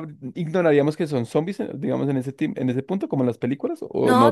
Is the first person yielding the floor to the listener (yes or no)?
yes